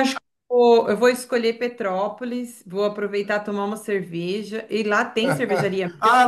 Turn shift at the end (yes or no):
yes